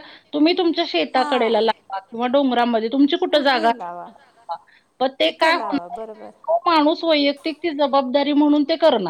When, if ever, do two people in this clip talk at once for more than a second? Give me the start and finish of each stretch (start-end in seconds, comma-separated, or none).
none